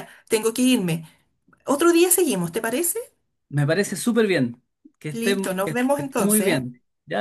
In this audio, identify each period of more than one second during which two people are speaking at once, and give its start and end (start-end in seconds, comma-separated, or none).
5.1-6.7